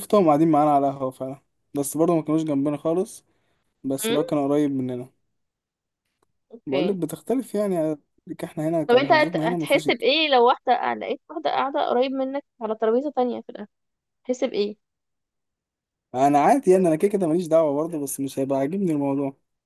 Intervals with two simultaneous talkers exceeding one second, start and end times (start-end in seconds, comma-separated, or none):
8.9-10.1